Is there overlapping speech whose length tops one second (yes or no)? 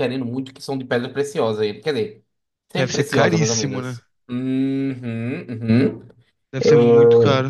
yes